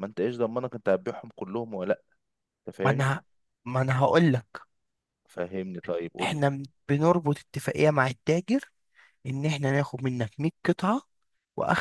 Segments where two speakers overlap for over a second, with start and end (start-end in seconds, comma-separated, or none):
none